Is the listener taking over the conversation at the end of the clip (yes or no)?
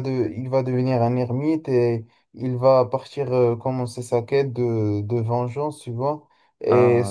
no